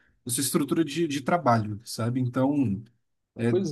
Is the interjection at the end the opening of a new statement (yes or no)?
no